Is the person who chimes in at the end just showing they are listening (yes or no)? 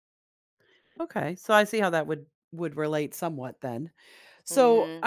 no